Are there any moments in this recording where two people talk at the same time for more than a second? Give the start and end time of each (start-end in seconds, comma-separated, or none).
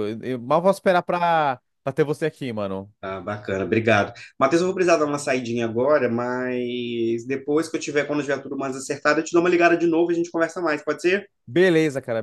none